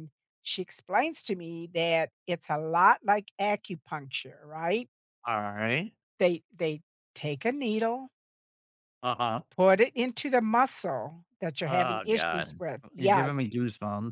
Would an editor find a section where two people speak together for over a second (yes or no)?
yes